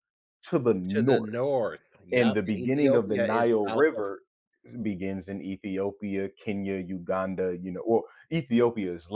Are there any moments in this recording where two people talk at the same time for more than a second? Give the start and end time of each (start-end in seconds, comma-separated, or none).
2.1-4.0